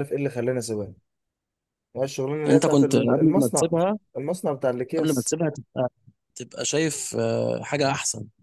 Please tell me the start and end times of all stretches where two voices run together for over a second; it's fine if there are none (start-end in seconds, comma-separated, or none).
2.5-3.7